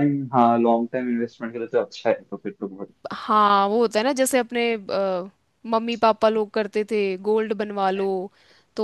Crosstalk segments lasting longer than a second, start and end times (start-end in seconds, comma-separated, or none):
none